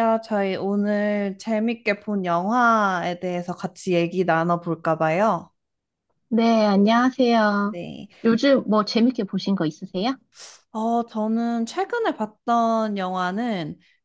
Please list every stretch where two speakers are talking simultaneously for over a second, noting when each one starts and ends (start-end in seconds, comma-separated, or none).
none